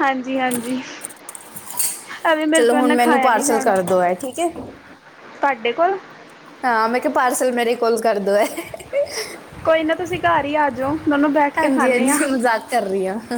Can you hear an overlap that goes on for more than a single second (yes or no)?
yes